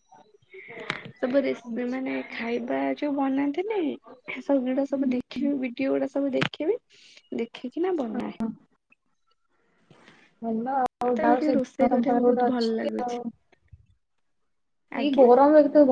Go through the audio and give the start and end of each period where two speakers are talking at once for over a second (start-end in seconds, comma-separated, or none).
11.1-13.2